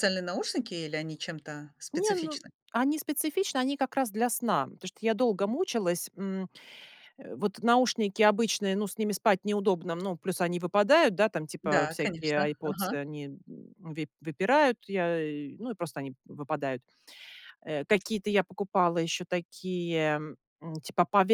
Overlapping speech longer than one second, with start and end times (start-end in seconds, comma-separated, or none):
11.6-13.0